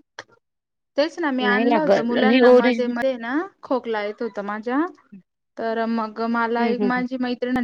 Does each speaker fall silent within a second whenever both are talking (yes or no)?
no